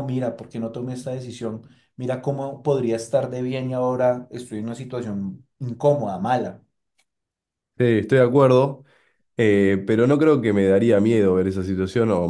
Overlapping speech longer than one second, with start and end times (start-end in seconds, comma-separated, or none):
none